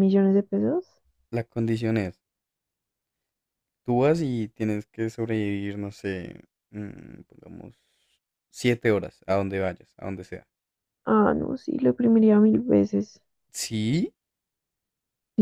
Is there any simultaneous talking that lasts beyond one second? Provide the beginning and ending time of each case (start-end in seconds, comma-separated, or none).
none